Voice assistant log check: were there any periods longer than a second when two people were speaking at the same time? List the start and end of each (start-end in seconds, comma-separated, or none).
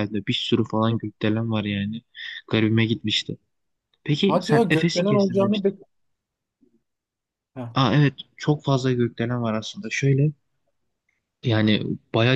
4.2-5.7